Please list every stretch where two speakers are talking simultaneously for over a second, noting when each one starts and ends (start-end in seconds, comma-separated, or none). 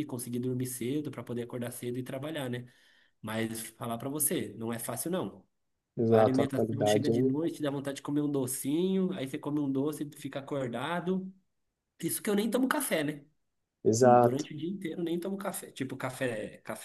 6.1-7.3